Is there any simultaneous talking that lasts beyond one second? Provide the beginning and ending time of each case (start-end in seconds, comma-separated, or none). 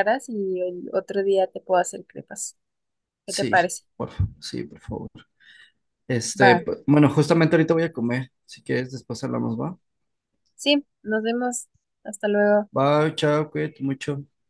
none